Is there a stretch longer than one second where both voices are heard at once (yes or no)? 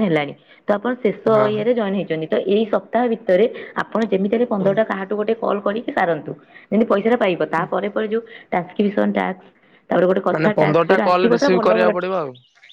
yes